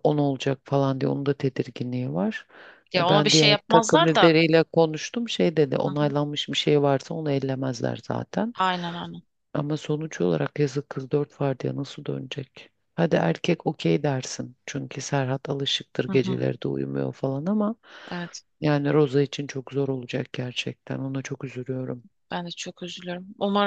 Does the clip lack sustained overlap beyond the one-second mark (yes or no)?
no